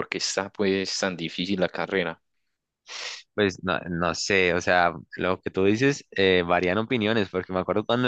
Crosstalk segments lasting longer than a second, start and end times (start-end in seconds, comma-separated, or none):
none